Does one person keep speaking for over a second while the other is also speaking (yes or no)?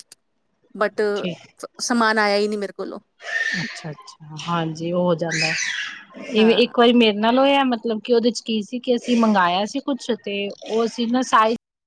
no